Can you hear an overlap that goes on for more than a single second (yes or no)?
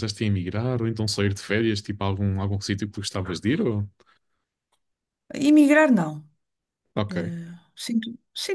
no